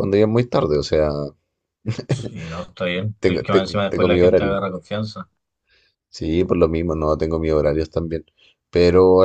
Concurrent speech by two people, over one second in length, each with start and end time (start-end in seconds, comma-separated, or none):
3.2-4.6